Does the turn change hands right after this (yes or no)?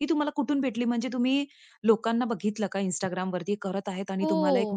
yes